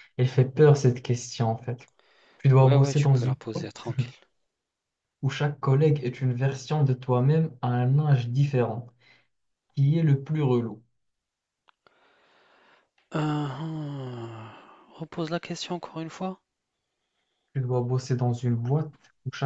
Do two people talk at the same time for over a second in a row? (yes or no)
yes